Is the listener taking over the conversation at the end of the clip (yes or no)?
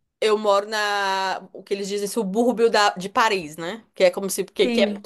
no